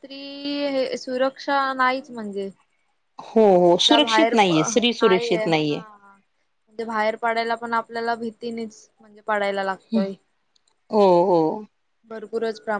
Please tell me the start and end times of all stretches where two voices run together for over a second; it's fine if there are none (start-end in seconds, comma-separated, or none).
3.8-5.8